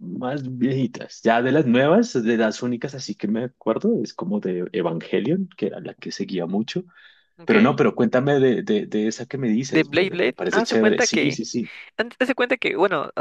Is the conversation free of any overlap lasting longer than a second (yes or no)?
no